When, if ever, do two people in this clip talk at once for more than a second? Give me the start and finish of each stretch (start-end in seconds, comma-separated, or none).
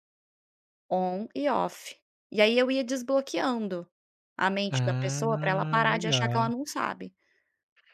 4.7-6.5